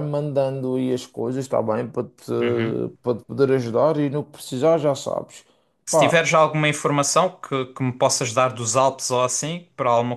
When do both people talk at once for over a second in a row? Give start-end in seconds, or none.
none